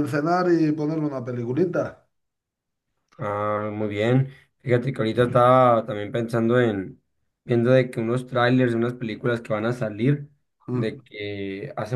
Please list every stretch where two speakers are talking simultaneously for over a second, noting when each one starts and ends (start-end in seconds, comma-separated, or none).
none